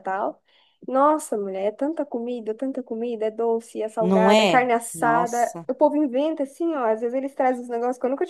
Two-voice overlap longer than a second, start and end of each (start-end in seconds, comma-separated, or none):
4.0-5.7